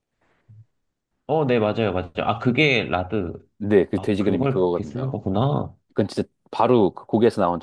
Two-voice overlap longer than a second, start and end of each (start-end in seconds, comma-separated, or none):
4.0-5.2